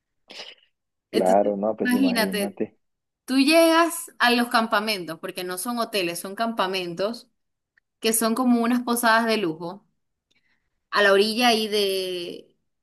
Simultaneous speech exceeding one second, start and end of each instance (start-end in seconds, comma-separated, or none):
1.1-2.6